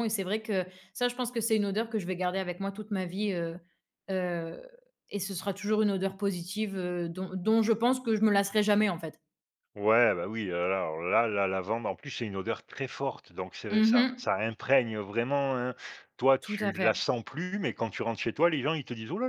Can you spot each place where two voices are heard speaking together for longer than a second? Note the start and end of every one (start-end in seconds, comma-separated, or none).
none